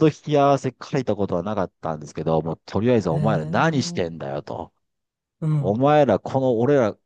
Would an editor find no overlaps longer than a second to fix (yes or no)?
no